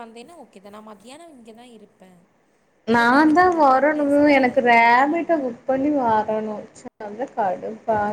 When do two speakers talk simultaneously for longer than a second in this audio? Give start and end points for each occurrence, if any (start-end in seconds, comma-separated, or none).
3.0-5.5